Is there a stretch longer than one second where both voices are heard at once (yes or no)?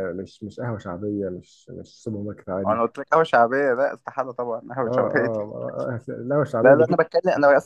no